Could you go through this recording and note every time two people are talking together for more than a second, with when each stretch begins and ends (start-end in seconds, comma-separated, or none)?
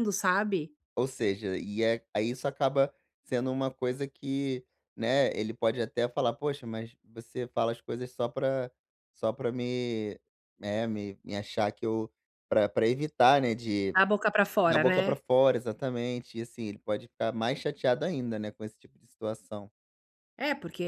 none